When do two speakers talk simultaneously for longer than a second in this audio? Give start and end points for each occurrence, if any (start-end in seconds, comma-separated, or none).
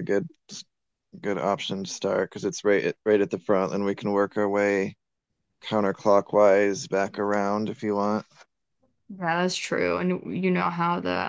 none